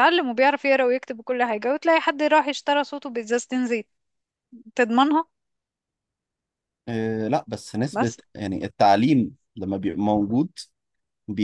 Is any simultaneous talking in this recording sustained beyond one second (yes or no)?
no